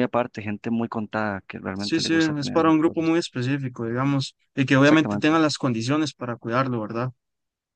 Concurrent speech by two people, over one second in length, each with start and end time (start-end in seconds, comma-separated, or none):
1.7-3.1